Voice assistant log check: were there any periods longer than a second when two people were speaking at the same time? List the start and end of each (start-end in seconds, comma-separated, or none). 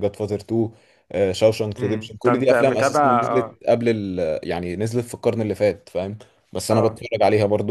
1.8-3.6